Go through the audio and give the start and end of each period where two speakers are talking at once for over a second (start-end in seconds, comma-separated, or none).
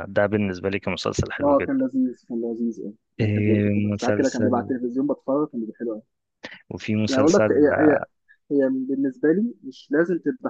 3.2-4.7